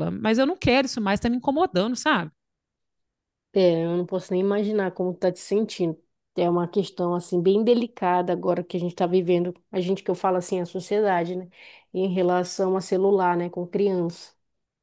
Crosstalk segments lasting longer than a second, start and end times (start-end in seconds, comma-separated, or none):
none